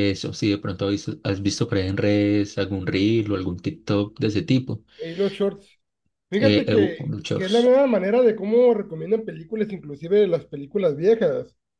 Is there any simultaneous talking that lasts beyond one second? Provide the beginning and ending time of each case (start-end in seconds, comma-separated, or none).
6.4-7.8